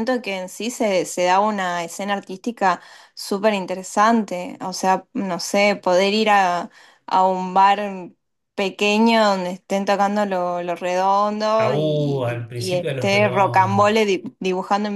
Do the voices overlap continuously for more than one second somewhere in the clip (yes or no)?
yes